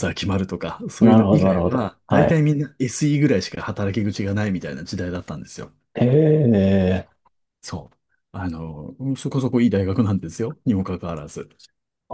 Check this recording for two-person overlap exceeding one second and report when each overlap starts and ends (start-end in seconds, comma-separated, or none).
1.0-2.4